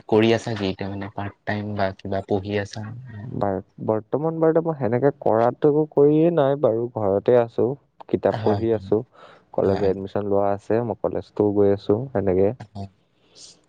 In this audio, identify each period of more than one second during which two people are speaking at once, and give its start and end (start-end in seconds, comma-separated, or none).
none